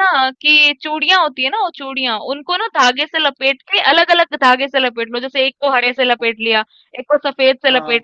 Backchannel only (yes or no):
yes